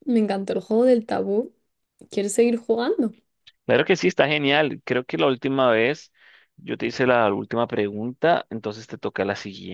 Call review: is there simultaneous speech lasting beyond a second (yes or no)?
no